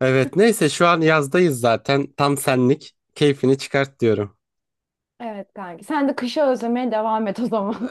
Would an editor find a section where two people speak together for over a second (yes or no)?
no